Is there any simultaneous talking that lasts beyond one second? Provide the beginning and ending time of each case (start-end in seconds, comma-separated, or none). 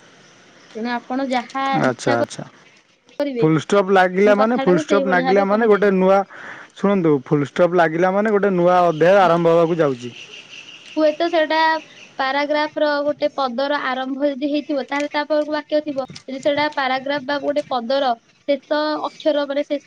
4.4-5.9